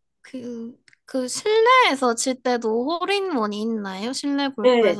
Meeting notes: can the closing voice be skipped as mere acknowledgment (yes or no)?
no